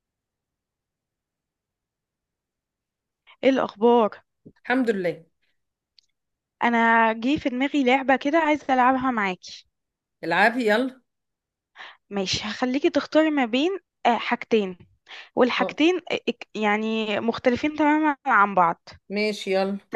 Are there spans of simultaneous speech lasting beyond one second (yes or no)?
no